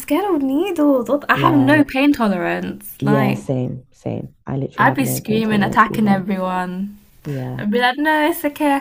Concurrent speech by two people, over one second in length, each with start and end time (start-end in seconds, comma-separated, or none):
4.8-6.3